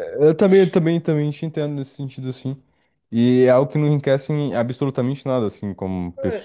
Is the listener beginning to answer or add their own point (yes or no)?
yes